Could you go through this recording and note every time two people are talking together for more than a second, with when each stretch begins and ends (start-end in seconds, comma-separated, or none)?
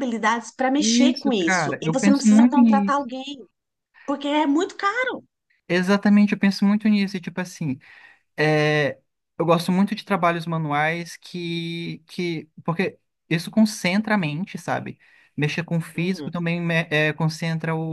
0.8-3.0